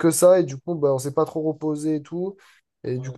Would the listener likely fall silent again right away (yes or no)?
yes